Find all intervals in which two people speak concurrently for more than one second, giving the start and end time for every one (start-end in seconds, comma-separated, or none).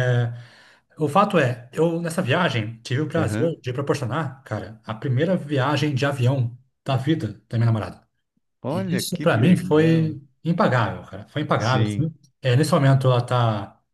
8.7-10.1